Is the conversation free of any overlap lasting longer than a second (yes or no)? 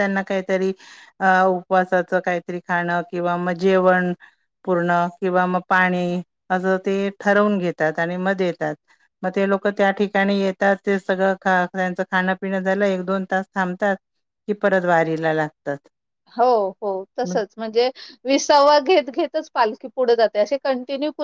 yes